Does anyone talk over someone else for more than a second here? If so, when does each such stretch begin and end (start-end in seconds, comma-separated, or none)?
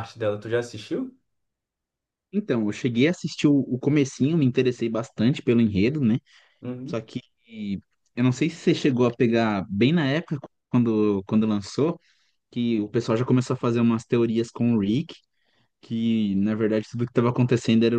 none